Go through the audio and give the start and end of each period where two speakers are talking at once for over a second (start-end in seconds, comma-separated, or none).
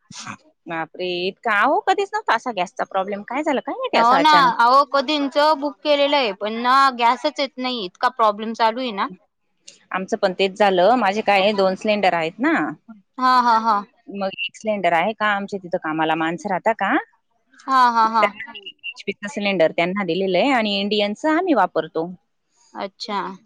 none